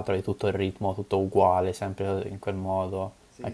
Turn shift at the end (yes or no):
no